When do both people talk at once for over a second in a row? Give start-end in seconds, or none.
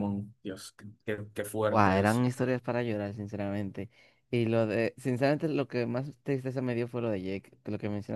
none